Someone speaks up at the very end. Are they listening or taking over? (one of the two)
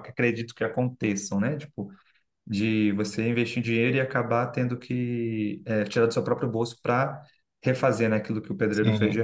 taking over